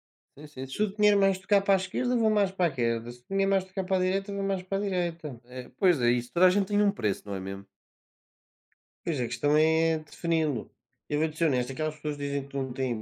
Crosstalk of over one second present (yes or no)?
no